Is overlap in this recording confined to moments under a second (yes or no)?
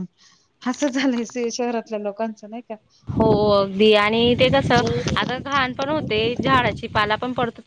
yes